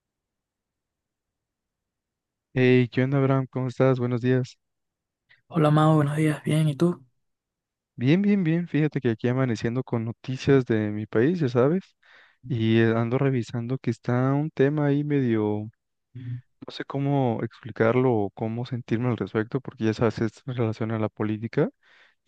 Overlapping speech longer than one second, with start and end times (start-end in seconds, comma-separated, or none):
none